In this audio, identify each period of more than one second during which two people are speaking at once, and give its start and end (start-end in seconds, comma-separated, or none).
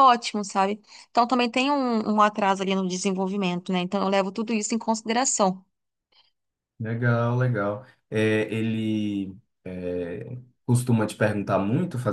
none